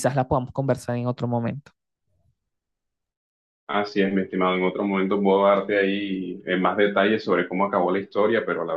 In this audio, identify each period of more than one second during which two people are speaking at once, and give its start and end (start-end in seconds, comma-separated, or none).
none